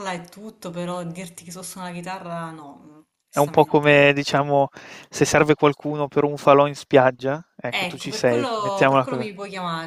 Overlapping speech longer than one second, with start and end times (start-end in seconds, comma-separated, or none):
7.7-9.3